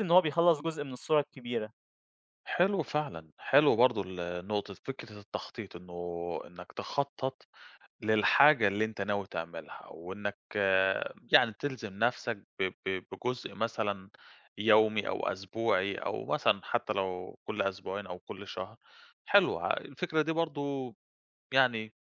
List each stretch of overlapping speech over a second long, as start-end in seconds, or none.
none